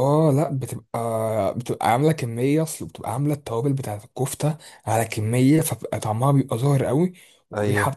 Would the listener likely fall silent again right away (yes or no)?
yes